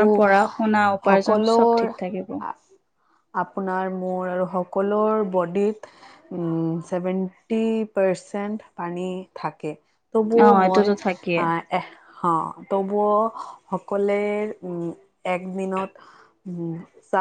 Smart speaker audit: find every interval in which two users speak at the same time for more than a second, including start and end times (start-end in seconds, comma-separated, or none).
1.1-2.4